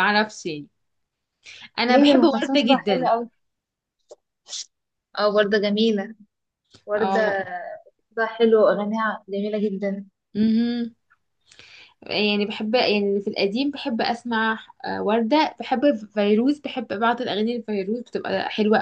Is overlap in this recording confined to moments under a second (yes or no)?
no